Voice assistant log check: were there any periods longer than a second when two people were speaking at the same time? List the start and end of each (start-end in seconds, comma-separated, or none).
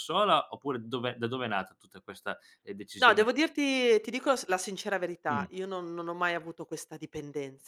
none